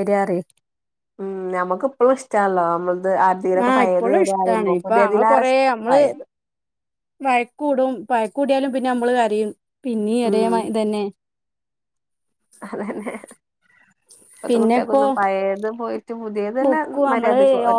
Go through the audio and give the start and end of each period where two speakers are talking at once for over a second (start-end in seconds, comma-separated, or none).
3.7-6.0